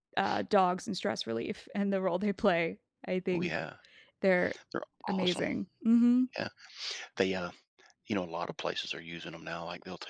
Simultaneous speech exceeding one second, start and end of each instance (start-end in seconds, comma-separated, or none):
none